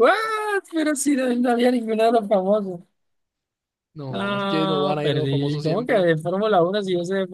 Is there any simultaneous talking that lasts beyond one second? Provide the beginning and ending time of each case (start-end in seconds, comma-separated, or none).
4.1-6.1